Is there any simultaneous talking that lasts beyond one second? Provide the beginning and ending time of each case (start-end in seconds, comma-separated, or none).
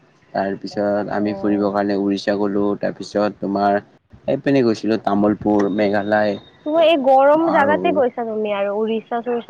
none